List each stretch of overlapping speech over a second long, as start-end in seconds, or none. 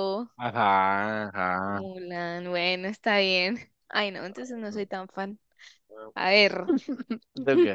none